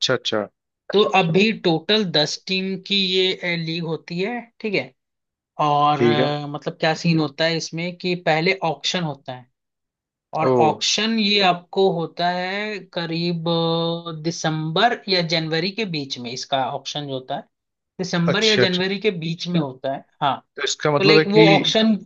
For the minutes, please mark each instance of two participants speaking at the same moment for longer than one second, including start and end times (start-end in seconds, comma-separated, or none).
none